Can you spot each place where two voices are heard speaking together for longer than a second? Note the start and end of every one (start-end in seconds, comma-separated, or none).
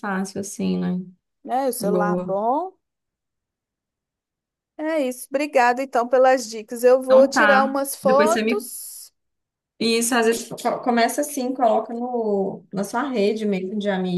7.0-8.7